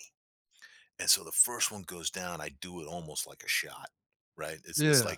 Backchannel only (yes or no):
yes